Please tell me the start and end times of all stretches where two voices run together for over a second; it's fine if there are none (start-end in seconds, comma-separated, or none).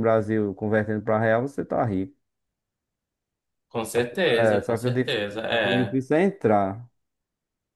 4.4-6.0